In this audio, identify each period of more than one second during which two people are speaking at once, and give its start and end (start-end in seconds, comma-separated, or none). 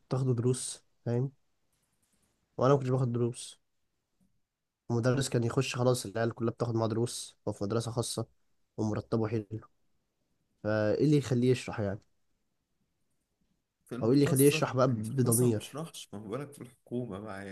14.0-15.8